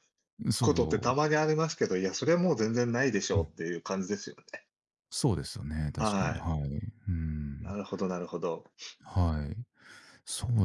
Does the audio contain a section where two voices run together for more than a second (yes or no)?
no